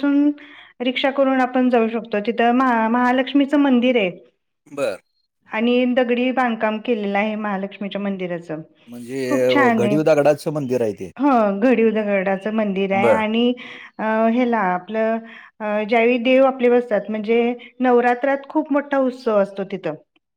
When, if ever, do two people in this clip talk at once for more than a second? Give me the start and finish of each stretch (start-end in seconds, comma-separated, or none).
9.3-10.7